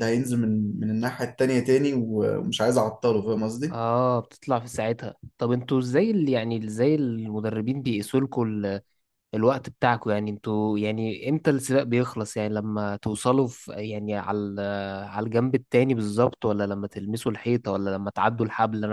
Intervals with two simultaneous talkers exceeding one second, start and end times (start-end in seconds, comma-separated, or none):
none